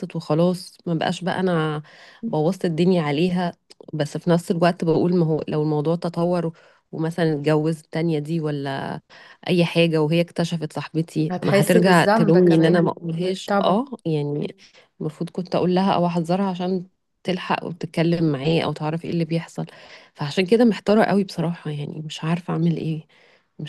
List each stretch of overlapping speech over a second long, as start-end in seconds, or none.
11.3-12.8